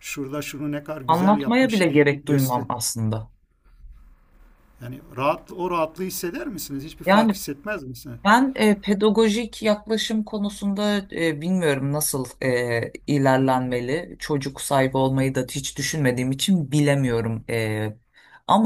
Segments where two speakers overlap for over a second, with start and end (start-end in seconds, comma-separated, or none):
1.1-2.6